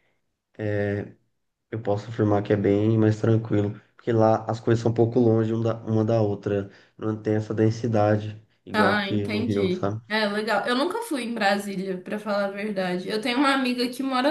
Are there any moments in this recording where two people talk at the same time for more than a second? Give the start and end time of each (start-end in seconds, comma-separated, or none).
8.7-10.0